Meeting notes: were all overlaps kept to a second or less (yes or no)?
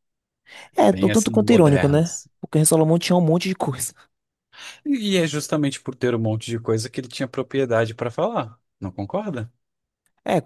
no